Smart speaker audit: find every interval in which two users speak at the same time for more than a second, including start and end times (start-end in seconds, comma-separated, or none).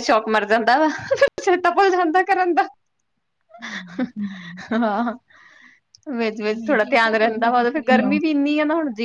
6.6-8.2